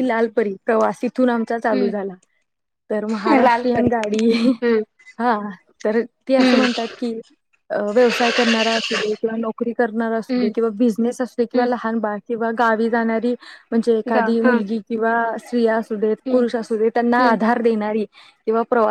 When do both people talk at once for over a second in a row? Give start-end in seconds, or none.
none